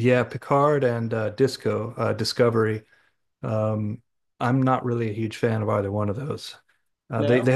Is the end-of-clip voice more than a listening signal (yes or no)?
no